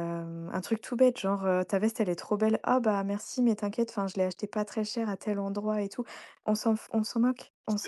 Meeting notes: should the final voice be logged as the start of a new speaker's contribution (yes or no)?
no